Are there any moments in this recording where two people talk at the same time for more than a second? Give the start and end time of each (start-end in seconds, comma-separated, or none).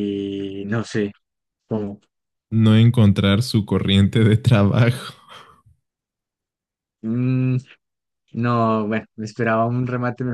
none